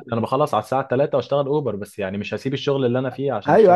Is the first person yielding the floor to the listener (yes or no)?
yes